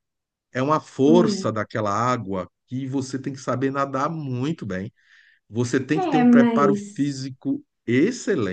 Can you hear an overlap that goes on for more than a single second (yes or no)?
yes